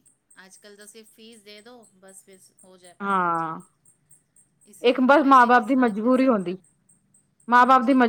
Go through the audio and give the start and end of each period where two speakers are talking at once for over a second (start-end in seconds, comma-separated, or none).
4.9-6.6